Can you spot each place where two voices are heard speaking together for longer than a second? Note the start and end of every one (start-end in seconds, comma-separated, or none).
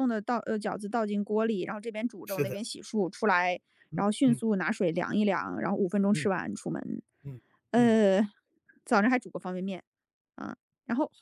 none